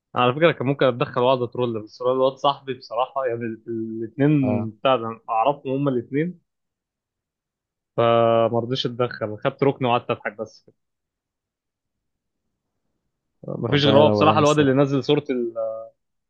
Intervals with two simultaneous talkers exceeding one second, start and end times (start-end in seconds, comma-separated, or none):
13.7-14.9